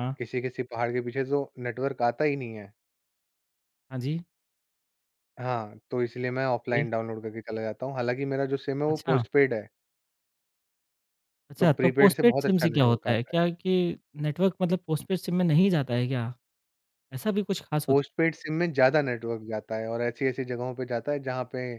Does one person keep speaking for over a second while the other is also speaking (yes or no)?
yes